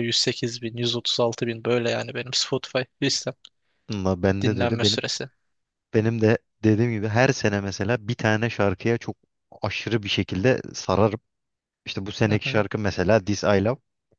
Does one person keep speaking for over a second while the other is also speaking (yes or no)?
no